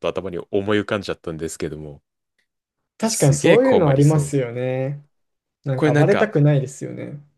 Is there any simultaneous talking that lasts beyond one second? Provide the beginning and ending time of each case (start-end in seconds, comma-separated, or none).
3.0-4.3